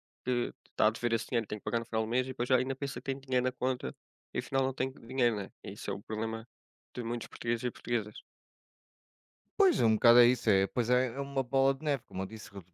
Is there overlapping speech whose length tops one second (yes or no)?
no